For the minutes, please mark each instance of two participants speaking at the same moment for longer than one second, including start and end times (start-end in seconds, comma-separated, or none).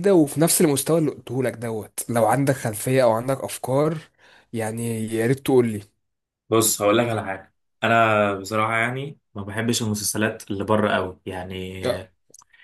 none